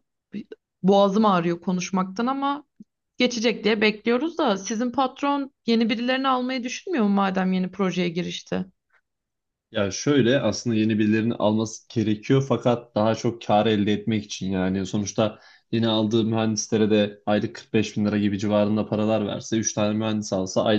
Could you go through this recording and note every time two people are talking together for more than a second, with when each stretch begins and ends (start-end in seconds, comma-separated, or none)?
none